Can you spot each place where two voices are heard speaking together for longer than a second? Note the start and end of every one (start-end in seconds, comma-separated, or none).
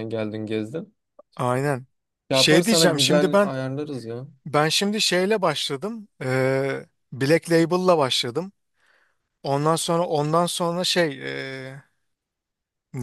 2.3-3.5